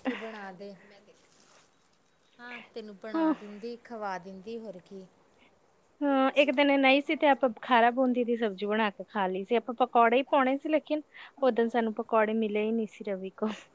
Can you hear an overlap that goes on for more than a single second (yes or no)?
yes